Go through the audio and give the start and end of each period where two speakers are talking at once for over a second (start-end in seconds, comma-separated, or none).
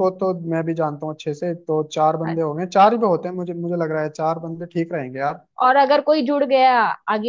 none